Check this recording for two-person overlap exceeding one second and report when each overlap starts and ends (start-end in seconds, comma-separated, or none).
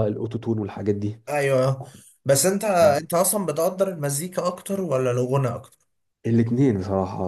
none